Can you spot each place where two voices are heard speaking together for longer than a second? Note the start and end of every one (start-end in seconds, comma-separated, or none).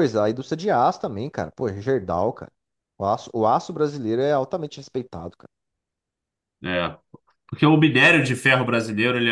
none